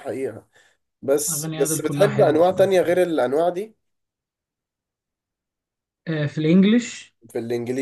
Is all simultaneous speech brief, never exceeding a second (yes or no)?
no